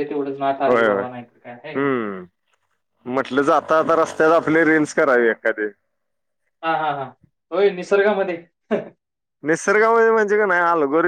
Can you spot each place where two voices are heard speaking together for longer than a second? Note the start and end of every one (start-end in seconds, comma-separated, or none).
none